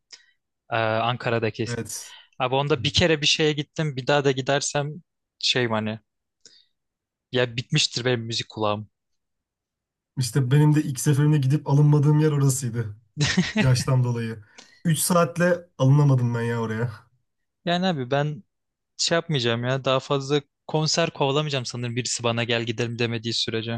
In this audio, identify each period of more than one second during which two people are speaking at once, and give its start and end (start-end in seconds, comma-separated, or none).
none